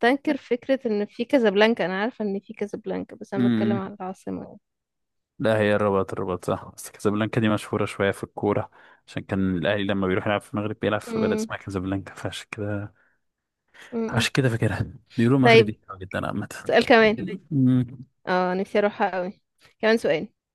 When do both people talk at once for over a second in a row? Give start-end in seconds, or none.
none